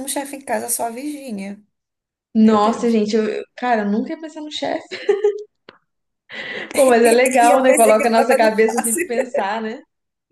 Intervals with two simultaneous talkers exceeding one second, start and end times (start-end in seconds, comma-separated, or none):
7.0-9.1